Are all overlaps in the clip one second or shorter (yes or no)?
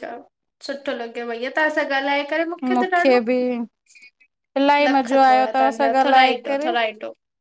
no